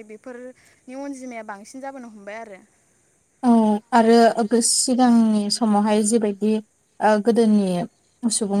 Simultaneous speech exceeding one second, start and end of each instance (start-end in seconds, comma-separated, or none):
none